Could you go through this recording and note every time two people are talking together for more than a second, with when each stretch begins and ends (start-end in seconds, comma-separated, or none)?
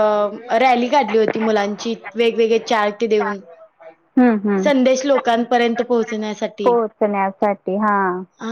none